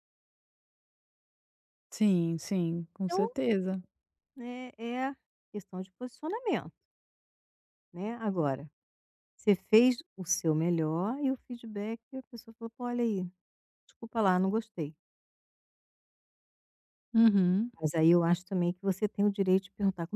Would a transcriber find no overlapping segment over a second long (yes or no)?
yes